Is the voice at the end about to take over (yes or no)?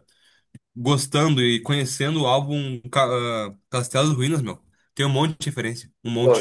yes